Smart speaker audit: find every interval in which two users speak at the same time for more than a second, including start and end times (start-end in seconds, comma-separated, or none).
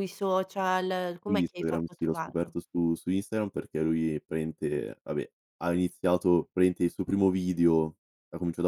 1.2-2.6